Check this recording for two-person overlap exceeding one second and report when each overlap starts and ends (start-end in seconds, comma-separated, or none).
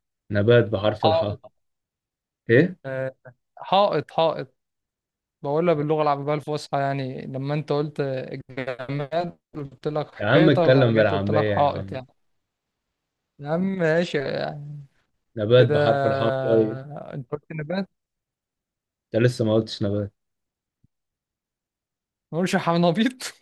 10.2-12.0